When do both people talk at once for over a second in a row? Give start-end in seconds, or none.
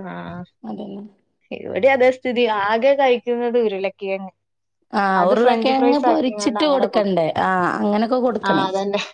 5.2-7.3